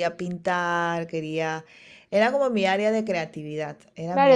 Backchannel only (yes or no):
no